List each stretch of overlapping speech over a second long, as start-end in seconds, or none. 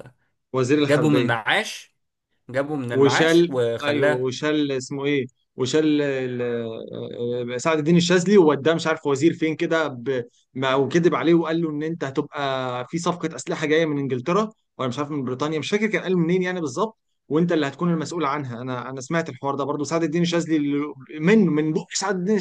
2.9-4.3